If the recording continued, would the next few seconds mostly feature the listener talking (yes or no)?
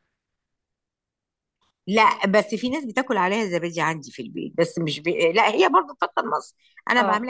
no